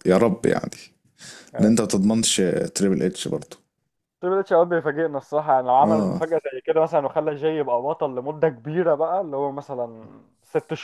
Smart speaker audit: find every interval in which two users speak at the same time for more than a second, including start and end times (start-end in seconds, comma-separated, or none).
none